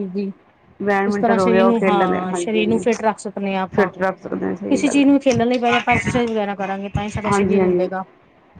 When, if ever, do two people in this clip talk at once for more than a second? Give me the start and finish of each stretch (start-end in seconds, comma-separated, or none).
1.1-2.8